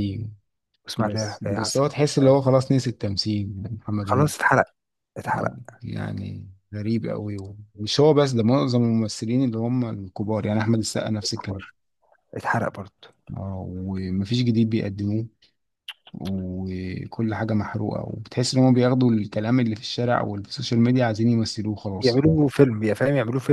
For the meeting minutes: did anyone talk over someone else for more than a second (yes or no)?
yes